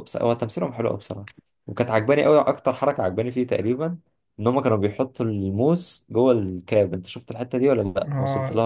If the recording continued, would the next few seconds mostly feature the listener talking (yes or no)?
yes